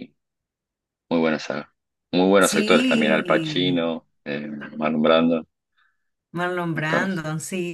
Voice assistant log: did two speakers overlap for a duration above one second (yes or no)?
yes